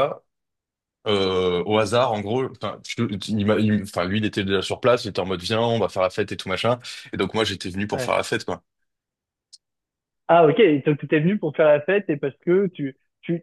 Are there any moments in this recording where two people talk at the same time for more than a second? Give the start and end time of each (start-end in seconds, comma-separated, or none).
none